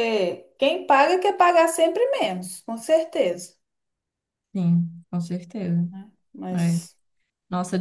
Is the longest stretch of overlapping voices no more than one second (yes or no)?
yes